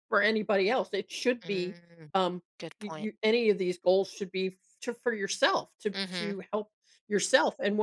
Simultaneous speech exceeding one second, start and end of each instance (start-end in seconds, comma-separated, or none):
none